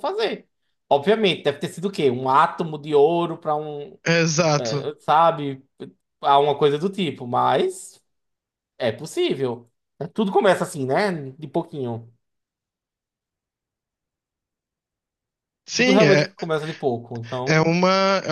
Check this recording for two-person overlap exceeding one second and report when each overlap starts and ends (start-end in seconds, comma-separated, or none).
none